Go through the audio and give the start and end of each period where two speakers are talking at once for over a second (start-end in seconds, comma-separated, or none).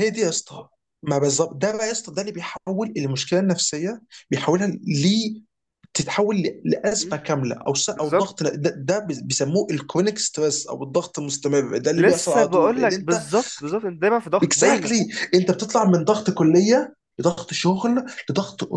12.0-13.2